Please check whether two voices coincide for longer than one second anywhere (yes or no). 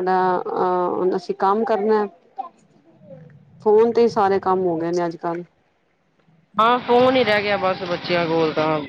no